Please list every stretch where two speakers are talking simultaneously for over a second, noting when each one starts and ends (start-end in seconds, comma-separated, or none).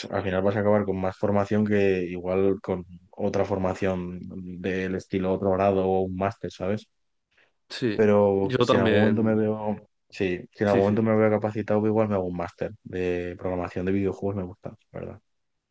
8.0-9.5